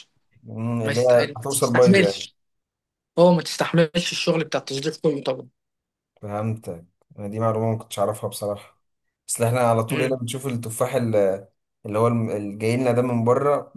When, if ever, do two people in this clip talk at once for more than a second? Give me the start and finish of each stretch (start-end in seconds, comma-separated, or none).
0.8-2.3